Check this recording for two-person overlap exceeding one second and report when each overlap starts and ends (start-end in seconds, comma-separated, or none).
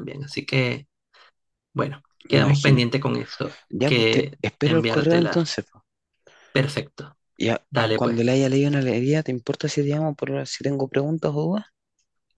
3.7-5.5